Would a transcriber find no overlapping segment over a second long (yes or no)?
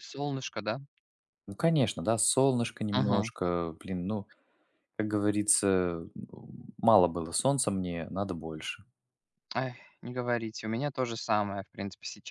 yes